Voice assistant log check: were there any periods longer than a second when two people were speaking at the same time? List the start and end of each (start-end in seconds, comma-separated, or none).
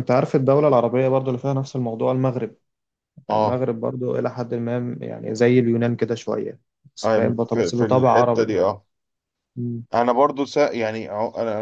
7.0-8.5